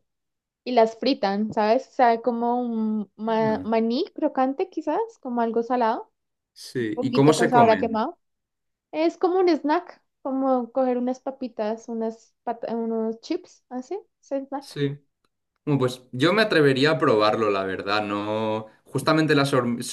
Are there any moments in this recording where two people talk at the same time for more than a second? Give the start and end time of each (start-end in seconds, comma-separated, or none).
6.8-8.1